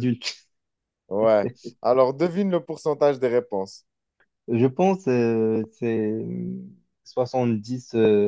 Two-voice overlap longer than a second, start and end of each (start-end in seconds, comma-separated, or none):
none